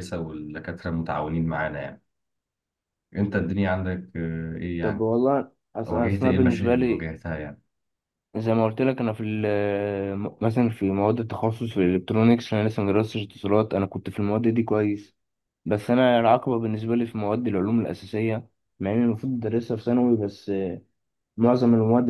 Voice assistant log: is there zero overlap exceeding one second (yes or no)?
no